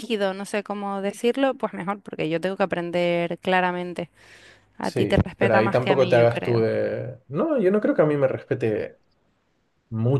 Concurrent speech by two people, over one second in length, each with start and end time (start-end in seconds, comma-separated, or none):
4.8-6.6